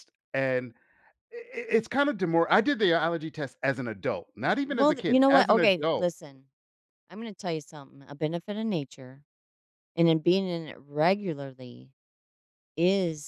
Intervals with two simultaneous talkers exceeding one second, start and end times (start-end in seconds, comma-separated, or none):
4.7-6.1